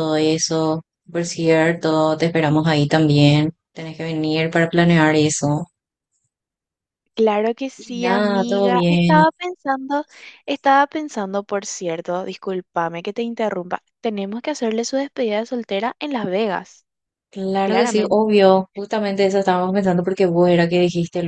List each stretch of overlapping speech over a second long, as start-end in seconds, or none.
7.8-9.3